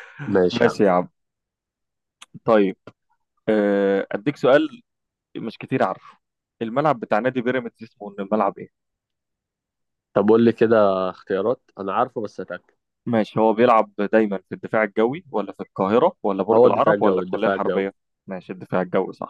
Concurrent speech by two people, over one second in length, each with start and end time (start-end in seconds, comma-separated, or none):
16.5-17.9